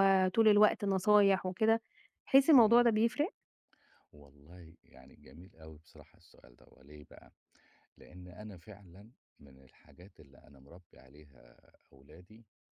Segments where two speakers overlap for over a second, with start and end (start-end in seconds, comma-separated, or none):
none